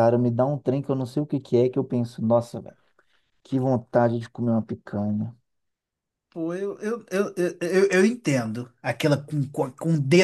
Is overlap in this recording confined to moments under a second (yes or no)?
yes